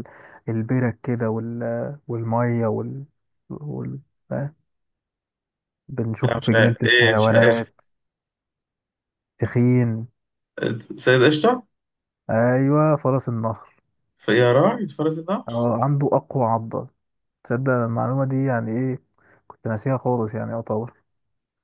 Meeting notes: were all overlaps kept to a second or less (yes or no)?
no